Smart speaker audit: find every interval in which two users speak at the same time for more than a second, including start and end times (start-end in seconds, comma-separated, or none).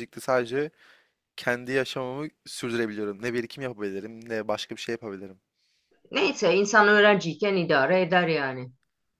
none